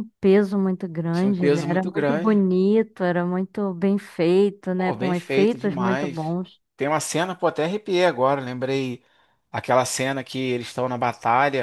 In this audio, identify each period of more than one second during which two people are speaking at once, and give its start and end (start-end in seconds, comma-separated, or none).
1.1-2.4, 4.7-6.2